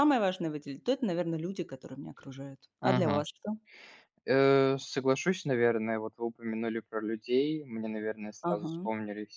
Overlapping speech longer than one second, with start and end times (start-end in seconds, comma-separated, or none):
none